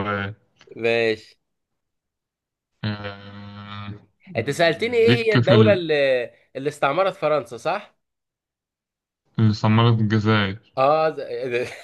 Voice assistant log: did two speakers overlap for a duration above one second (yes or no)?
yes